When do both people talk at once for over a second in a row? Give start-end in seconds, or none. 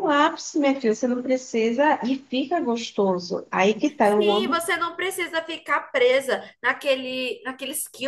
none